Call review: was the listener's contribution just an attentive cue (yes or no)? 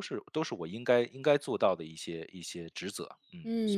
no